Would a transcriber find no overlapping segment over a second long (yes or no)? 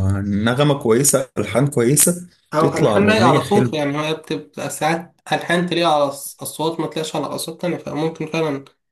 no